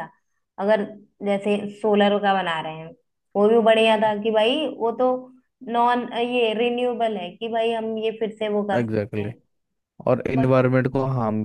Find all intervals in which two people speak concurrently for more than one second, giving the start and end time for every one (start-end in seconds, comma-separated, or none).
none